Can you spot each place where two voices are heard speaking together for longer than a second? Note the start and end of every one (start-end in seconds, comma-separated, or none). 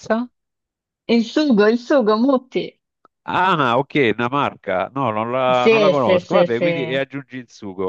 5.5-7.0